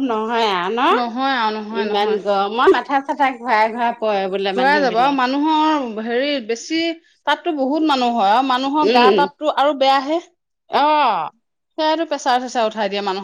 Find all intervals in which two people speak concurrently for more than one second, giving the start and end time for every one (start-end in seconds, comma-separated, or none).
none